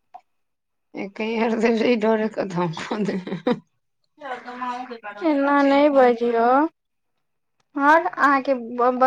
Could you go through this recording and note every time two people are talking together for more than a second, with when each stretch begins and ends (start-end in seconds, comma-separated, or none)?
none